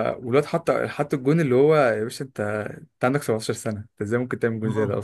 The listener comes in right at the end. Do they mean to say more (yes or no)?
no